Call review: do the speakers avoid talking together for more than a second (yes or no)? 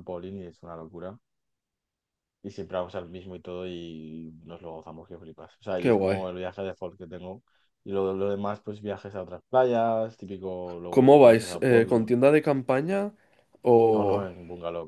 no